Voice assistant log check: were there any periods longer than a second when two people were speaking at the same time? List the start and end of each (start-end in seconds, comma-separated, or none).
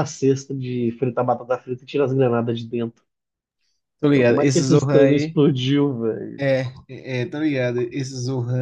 4.1-5.4